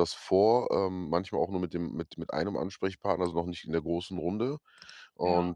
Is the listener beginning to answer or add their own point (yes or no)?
no